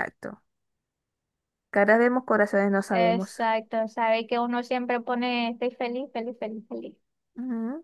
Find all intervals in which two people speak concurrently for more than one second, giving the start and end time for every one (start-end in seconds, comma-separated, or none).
none